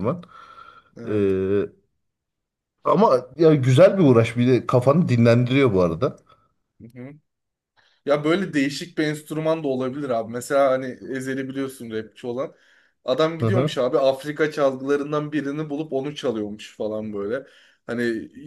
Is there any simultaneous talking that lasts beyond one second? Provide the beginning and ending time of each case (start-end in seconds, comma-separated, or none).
none